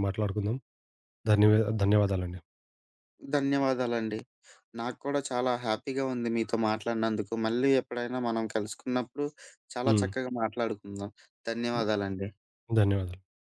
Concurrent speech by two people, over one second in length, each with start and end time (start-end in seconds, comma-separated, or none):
none